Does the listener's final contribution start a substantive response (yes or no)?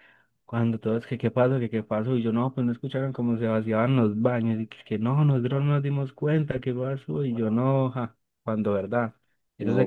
no